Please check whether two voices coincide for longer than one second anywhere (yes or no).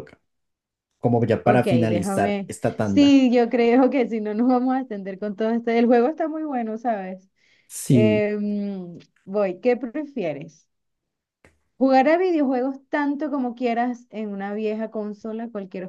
yes